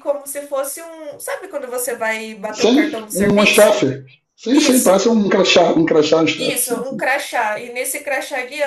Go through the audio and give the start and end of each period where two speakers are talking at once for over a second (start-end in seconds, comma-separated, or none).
2.5-3.9